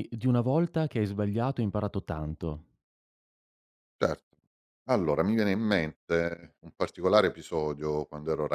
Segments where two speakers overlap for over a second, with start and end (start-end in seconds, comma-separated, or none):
none